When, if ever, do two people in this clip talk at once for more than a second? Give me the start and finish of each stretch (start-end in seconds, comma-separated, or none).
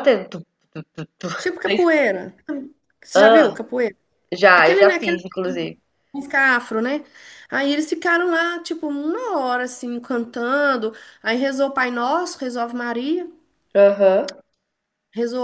4.5-5.7